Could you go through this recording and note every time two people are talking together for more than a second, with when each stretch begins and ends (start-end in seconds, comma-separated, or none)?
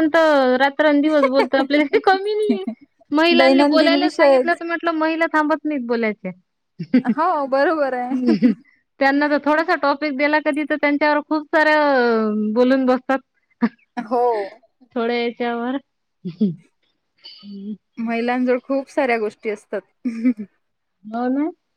3.4-4.6